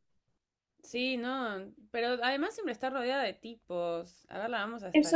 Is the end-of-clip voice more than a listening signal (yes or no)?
yes